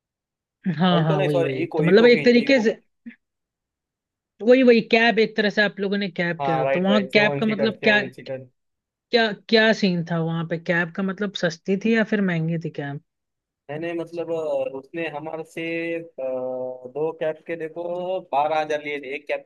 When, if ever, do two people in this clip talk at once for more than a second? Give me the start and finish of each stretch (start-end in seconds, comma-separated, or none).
0.9-2.7, 6.4-8.0